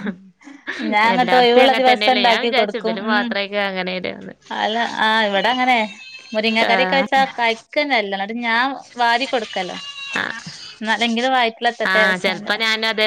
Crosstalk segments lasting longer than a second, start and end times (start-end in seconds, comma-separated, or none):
1.1-3.3